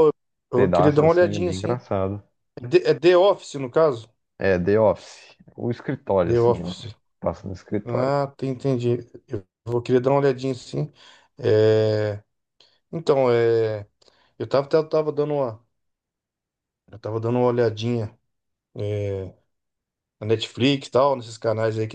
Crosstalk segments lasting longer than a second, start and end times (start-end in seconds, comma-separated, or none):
0.5-1.8